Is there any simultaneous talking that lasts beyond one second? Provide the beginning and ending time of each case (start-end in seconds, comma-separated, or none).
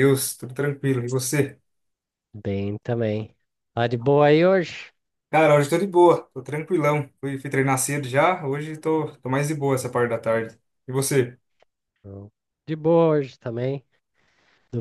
none